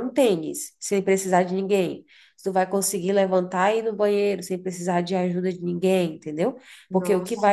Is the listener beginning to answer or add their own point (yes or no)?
no